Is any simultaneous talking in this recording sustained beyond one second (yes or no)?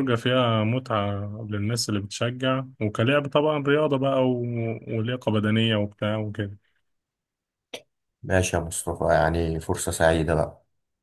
no